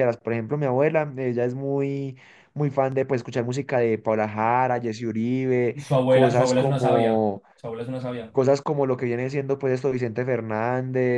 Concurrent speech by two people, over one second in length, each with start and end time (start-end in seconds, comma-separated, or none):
5.7-7.4